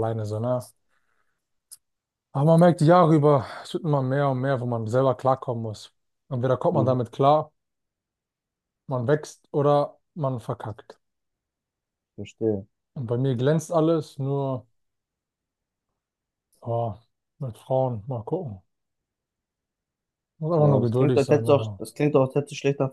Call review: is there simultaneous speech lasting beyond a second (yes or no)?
yes